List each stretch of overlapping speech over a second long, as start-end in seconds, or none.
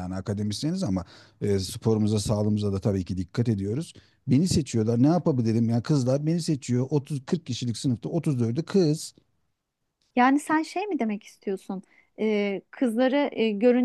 none